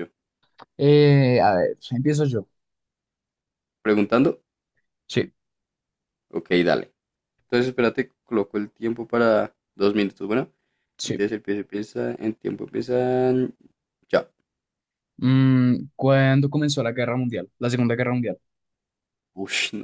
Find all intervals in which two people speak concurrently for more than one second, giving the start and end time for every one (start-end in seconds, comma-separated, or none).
none